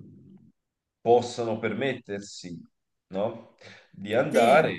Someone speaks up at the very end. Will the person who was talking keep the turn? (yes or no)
yes